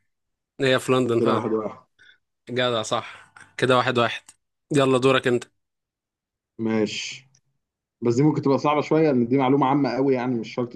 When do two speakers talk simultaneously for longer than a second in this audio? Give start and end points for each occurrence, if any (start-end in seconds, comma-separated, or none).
none